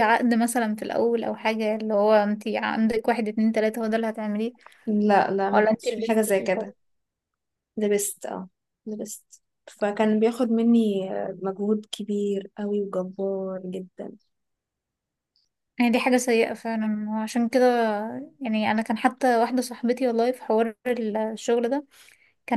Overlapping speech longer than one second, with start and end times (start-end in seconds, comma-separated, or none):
5.5-6.7